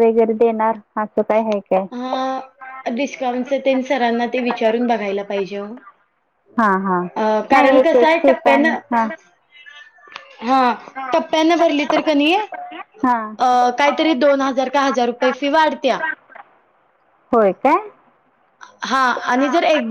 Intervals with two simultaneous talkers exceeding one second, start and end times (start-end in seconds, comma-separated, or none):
7.5-8.8